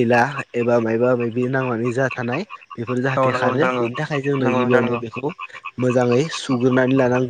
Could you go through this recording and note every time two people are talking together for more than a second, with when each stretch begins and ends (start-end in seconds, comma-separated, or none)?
3.2-4.9